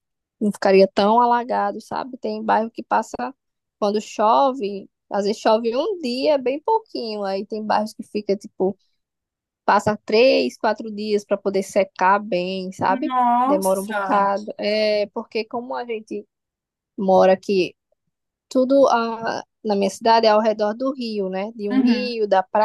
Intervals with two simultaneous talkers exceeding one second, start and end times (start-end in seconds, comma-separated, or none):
12.9-14.3